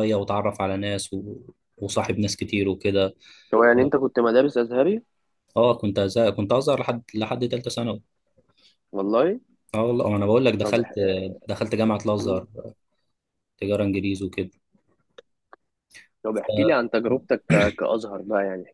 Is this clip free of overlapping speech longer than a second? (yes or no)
yes